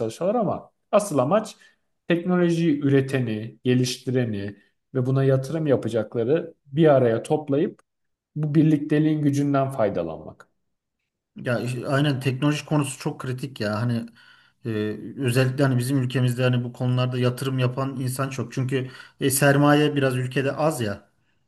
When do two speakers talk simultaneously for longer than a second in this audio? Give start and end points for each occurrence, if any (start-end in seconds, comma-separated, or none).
none